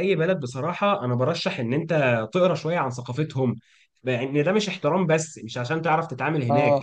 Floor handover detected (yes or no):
no